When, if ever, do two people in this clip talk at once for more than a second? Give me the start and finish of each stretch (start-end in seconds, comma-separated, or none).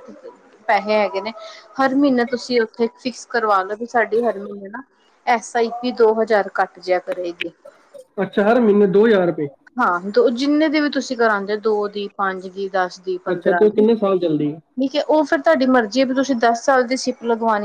13.3-14.5